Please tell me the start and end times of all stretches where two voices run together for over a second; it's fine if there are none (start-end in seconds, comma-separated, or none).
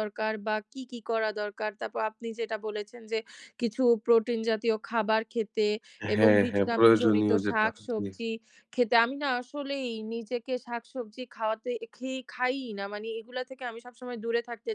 6.1-8.1